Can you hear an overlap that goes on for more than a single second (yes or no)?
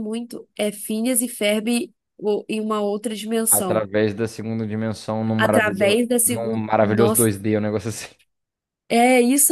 yes